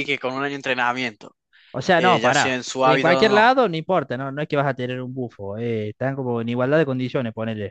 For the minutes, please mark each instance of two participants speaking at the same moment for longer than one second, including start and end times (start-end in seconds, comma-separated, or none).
1.9-3.5